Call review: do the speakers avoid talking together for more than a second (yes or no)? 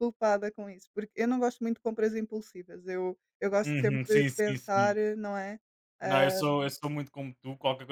no